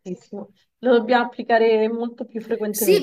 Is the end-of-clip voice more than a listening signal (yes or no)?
yes